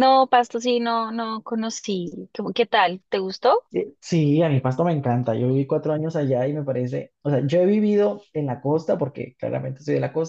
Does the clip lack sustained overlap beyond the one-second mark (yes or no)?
yes